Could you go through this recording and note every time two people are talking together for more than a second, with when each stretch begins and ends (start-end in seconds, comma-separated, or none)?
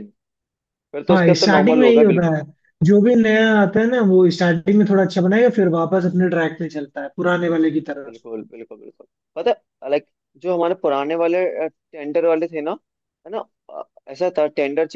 1.1-2.4